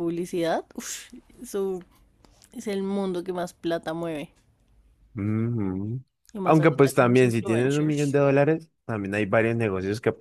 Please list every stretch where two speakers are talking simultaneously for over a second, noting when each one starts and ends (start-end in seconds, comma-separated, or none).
6.4-8.2